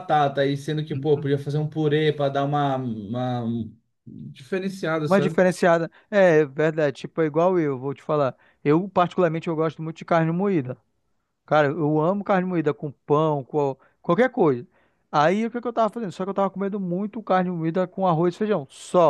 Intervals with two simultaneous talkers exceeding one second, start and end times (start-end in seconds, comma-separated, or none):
none